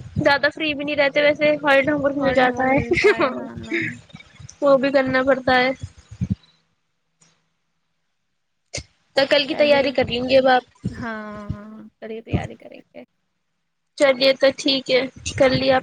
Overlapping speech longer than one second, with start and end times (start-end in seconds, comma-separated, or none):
2.2-3.8